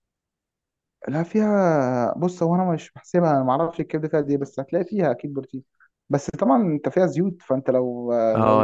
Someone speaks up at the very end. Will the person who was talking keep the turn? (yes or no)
no